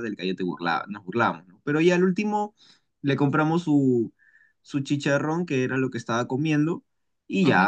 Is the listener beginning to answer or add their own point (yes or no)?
no